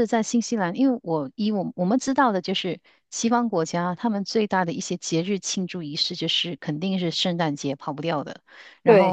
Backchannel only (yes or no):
yes